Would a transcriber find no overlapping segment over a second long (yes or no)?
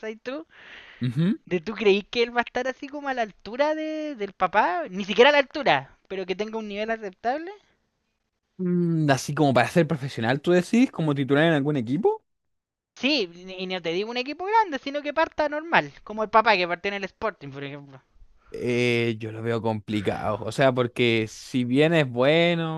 yes